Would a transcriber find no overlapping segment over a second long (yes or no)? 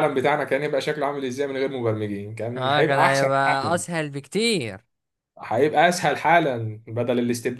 no